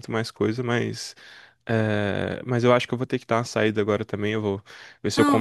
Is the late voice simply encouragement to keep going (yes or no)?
yes